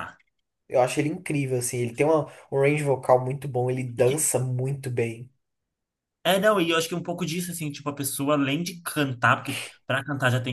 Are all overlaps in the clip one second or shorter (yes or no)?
yes